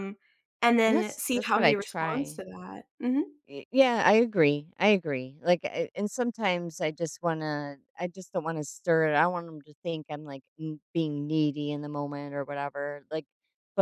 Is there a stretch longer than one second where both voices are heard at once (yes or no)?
yes